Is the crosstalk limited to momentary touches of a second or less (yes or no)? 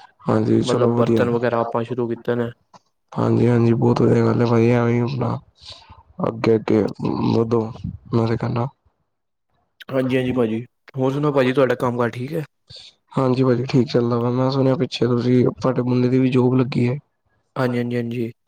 yes